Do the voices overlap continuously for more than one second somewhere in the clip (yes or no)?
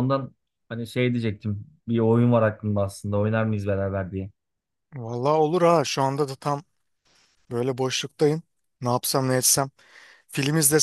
no